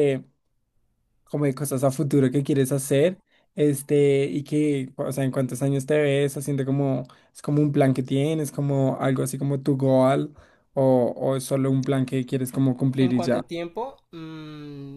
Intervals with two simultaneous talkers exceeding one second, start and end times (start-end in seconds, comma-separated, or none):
none